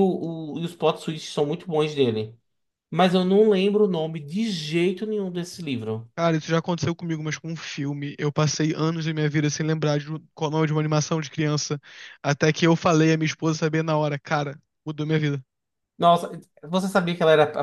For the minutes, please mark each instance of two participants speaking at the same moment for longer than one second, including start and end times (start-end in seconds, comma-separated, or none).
none